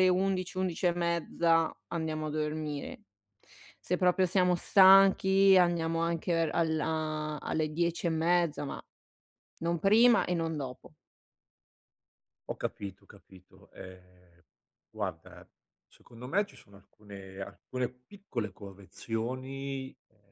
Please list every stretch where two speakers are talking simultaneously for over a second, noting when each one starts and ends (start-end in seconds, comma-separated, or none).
none